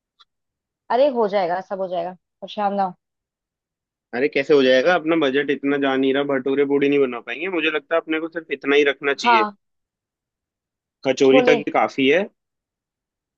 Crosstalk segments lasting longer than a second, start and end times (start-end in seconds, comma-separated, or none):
none